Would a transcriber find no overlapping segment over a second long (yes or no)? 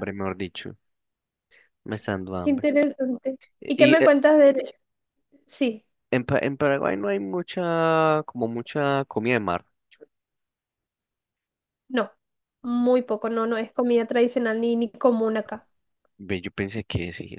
yes